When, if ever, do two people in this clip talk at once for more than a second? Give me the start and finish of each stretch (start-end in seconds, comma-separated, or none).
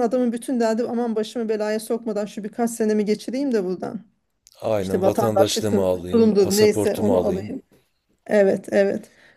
4.8-7.5